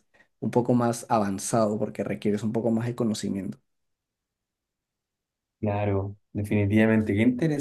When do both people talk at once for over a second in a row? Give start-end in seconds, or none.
none